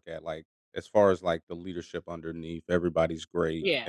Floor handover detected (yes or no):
no